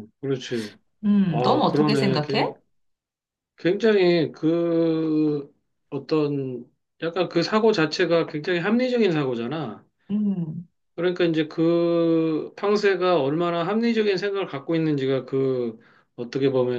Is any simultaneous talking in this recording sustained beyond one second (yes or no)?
yes